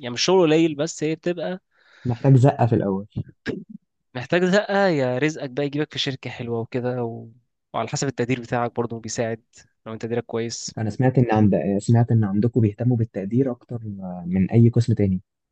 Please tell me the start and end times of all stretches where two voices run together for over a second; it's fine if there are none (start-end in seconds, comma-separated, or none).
none